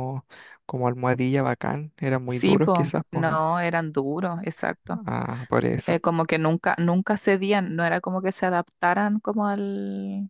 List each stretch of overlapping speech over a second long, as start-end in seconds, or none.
2.3-3.5